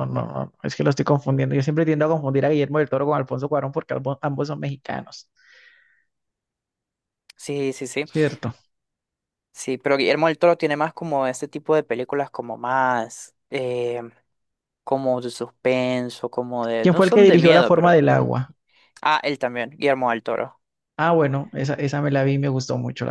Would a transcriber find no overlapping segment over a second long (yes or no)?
no